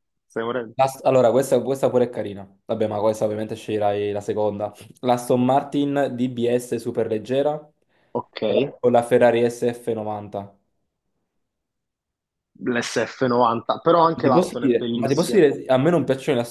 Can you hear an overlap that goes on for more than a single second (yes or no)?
yes